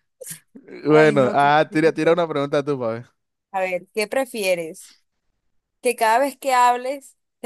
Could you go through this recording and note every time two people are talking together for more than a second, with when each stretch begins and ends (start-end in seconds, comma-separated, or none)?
0.9-2.2